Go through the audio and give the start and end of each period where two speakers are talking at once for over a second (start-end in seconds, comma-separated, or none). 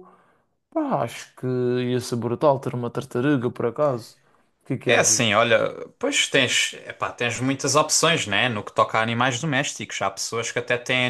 none